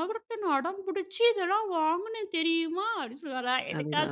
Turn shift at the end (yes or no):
no